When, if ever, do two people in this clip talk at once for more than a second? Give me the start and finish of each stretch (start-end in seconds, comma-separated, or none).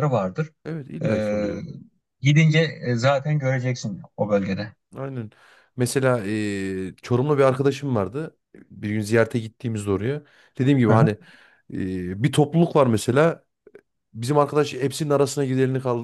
none